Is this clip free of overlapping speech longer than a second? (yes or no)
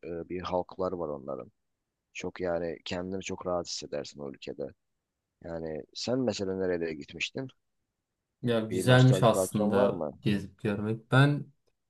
no